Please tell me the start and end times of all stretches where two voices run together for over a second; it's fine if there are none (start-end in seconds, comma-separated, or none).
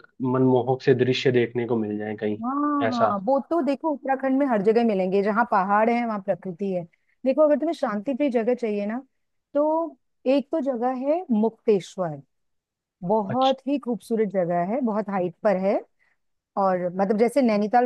none